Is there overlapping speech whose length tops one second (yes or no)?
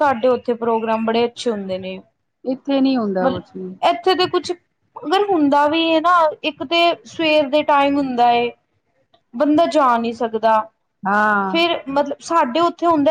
no